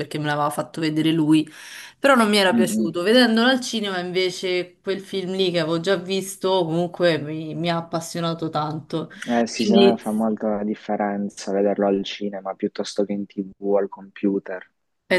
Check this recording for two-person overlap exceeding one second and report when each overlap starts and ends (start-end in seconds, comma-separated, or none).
none